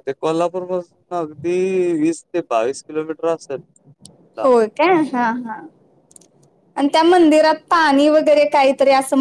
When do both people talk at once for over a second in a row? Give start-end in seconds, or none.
none